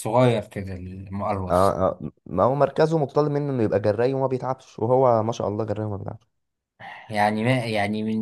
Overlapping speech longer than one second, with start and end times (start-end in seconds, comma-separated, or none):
none